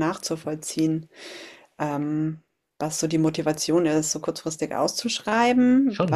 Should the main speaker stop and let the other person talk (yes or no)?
no